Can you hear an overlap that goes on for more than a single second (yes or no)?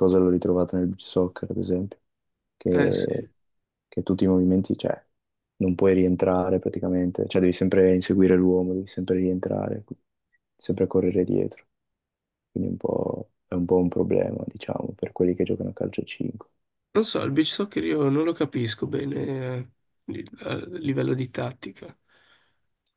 no